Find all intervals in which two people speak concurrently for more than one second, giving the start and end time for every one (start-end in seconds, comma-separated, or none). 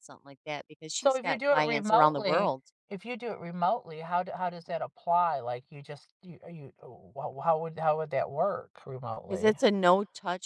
0.9-2.7